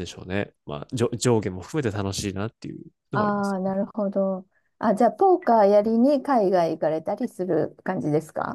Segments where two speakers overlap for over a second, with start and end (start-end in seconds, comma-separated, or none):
none